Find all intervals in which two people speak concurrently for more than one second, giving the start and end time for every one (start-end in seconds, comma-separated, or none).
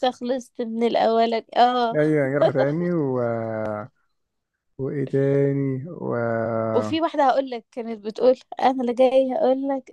none